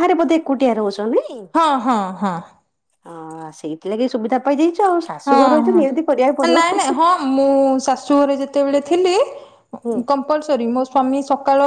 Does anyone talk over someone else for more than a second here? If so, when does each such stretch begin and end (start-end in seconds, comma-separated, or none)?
5.3-6.8